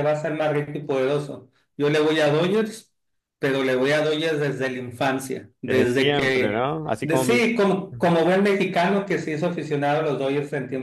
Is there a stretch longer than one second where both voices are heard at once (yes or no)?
yes